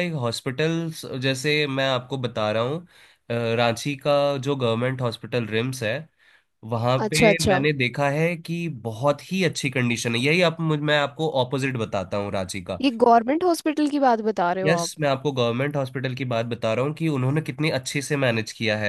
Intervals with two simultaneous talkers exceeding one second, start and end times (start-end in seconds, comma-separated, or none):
none